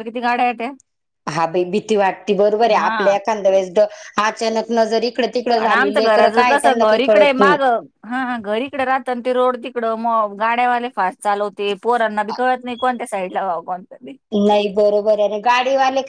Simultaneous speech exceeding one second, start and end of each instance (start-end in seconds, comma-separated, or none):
5.6-7.6